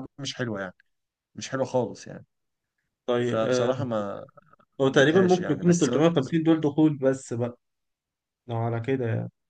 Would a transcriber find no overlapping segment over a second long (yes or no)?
no